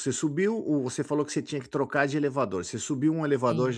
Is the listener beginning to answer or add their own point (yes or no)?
no